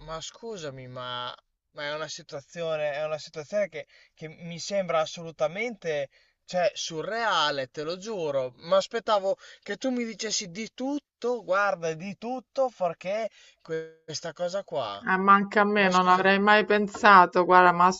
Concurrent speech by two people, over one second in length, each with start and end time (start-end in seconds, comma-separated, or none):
none